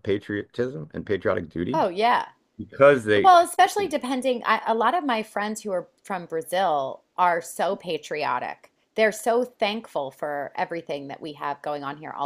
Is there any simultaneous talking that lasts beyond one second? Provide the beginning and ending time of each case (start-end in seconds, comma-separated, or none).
none